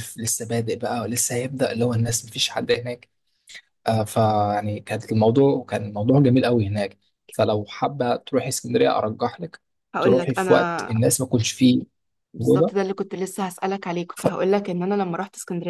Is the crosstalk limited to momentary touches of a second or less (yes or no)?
yes